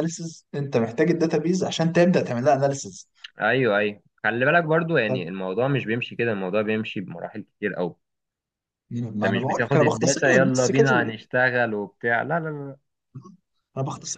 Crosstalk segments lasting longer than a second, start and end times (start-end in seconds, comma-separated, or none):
9.2-11.1